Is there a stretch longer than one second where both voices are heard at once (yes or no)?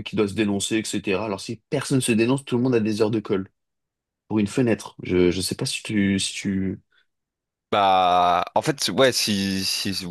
no